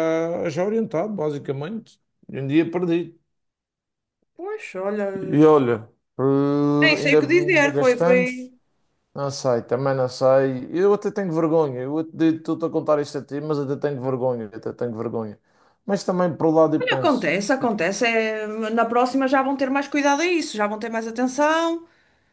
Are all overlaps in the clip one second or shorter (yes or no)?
no